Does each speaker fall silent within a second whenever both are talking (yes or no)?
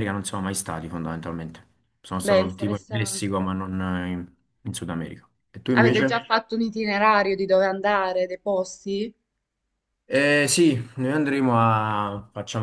no